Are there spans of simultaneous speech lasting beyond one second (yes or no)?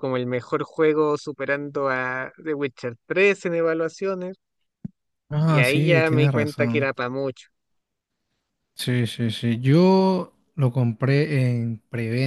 yes